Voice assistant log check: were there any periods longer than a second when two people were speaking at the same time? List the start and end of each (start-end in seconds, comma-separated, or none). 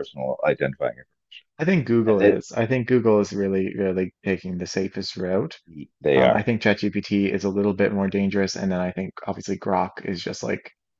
none